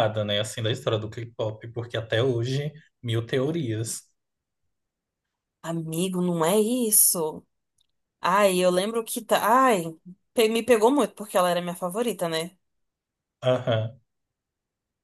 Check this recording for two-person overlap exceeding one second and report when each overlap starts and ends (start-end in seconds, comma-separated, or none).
none